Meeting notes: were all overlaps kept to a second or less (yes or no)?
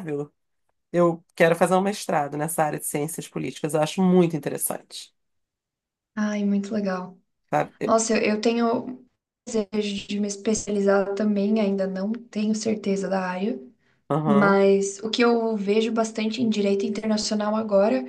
yes